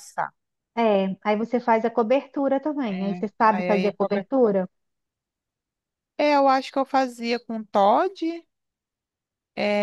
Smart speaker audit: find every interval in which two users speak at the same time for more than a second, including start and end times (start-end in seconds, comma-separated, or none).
2.9-4.3